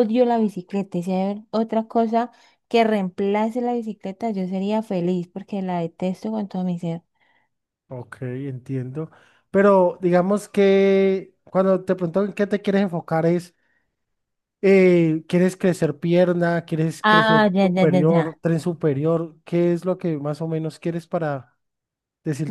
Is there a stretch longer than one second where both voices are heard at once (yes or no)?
yes